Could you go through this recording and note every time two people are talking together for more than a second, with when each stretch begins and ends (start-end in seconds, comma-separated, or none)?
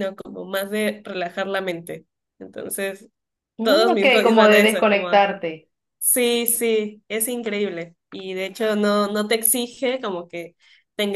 3.6-5.3